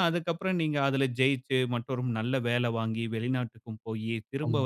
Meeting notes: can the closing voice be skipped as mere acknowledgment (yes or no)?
yes